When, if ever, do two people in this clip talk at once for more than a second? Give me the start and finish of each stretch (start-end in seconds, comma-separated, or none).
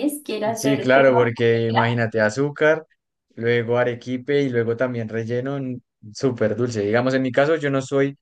0.5-1.8